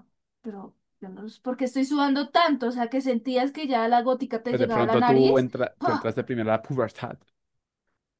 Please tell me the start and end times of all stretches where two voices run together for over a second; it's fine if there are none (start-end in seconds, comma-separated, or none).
4.5-6.1